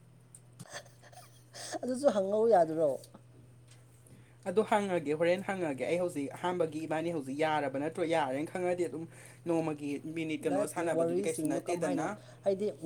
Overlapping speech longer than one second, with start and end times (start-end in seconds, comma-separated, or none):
10.4-12.1